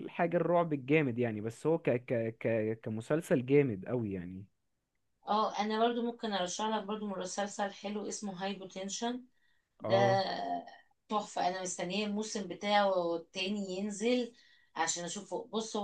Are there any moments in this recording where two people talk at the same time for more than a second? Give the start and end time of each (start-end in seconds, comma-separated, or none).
none